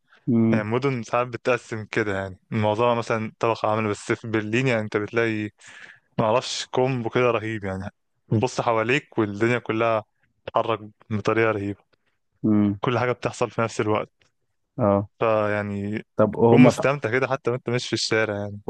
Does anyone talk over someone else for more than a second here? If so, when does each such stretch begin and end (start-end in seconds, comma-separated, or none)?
none